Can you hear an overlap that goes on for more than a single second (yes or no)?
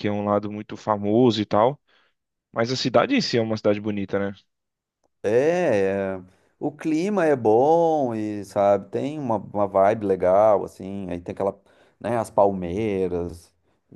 no